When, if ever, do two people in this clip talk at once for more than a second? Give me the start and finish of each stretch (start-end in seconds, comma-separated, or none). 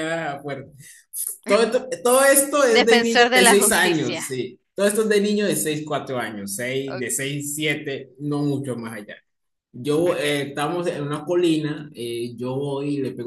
2.7-4.2